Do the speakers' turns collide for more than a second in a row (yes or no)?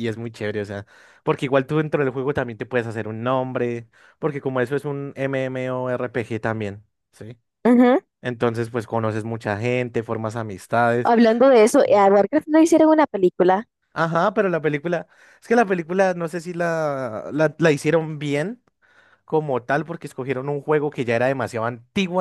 no